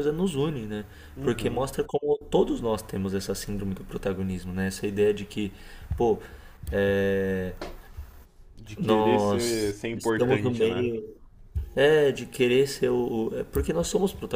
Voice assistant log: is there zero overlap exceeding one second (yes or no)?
no